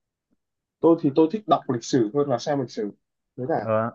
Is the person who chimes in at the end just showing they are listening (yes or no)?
no